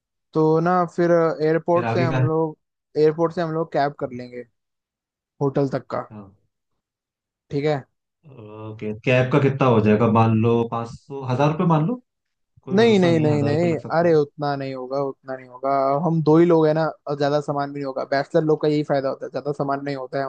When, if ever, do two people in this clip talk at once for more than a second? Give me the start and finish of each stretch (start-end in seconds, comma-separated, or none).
12.8-14.1